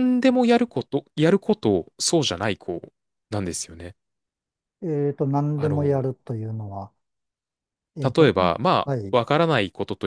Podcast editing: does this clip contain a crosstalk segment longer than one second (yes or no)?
no